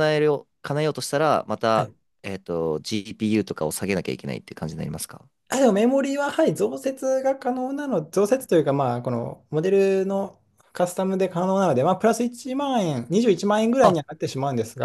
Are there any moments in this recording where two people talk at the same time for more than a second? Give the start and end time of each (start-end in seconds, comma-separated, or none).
none